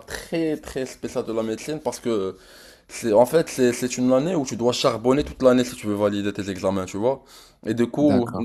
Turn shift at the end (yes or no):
no